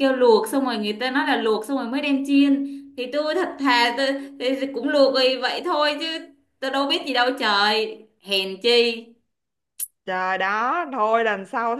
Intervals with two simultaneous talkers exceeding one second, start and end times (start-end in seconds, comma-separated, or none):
none